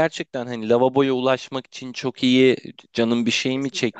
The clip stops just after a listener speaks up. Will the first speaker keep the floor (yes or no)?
yes